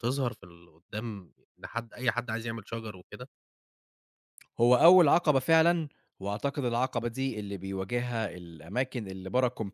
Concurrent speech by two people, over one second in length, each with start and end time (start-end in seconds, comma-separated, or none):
none